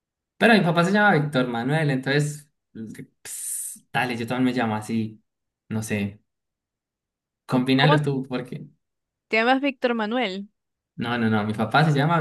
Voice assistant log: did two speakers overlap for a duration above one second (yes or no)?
no